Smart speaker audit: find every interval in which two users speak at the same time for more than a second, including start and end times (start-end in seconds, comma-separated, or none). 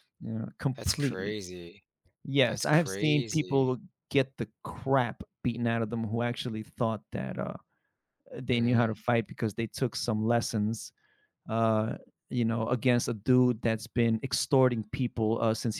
2.4-3.7